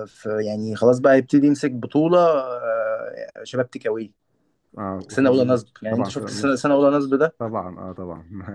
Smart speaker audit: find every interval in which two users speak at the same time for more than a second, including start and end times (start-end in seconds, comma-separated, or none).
5.1-6.5